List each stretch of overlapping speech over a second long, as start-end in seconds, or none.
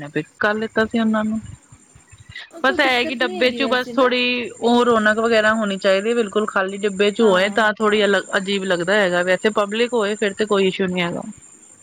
2.6-4.1